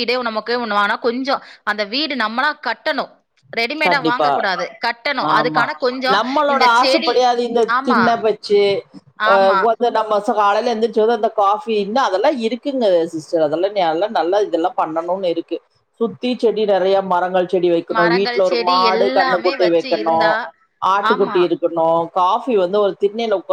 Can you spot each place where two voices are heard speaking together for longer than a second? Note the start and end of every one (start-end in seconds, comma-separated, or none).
18.0-20.2